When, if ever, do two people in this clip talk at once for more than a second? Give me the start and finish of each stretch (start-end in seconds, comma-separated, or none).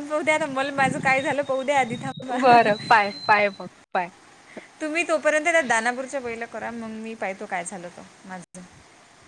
none